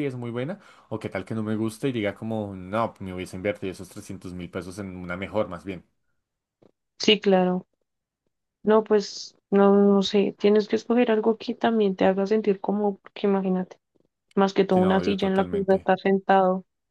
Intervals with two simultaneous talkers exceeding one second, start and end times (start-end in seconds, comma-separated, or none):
14.7-15.9